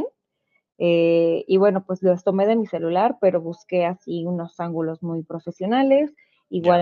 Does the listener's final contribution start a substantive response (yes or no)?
no